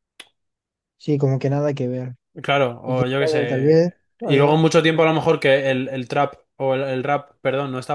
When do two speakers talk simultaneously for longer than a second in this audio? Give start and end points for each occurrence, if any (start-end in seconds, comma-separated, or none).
2.9-4.6